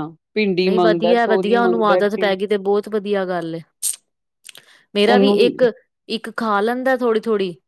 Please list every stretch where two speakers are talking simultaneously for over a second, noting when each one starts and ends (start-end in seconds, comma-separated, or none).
0.6-2.3